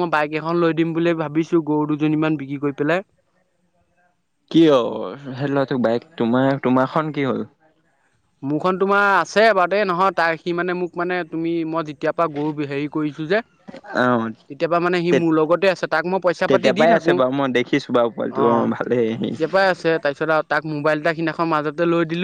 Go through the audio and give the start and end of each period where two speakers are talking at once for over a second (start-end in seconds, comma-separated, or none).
16.5-19.3